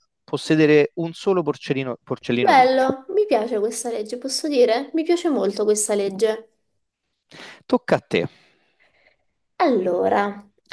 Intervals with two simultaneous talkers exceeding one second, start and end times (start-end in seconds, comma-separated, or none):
none